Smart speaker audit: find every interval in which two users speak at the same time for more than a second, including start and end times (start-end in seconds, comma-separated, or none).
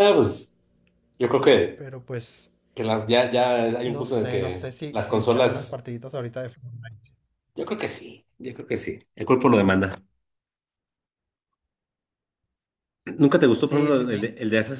3.8-5.8